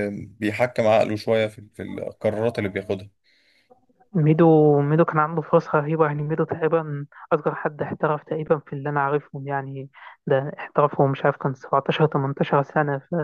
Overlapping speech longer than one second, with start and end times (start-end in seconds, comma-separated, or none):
none